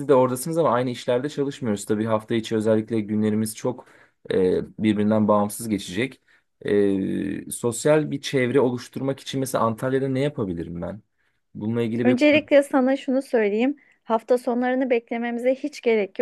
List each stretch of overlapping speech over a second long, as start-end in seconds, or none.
none